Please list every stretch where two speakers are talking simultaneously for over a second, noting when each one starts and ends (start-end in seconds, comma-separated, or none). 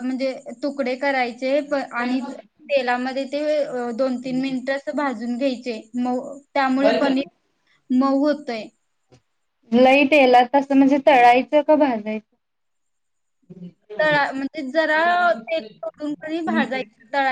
none